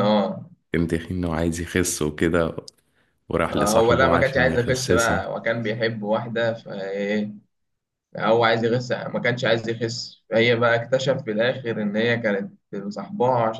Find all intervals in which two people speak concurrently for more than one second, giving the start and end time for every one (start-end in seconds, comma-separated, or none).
3.5-5.2